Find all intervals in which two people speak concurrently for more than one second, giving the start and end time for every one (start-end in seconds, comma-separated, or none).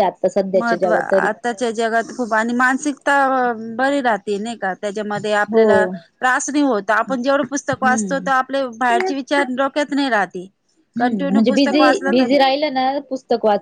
none